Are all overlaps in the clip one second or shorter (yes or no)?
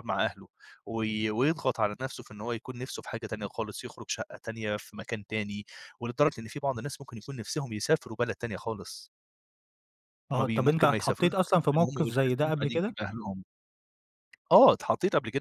no